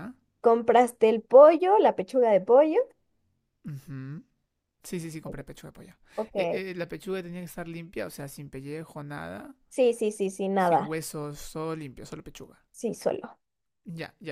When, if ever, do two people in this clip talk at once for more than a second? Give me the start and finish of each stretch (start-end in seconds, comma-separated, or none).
none